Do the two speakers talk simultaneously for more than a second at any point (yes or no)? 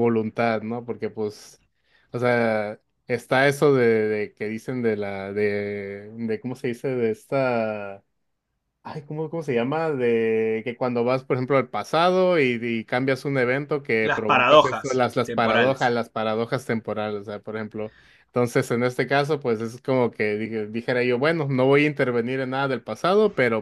yes